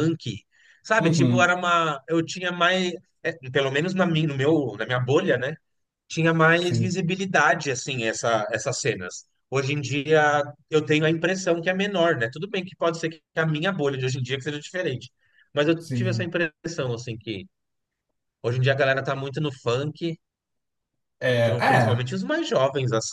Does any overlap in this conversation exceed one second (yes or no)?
no